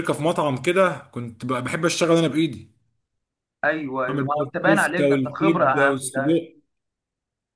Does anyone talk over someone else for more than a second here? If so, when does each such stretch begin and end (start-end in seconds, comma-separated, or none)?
4.1-6.4